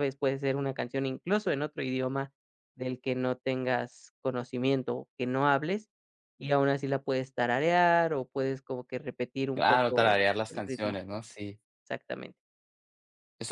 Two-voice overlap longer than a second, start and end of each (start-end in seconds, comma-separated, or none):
9.5-11.0